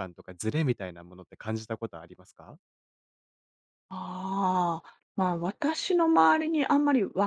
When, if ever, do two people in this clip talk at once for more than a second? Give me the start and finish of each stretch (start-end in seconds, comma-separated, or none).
none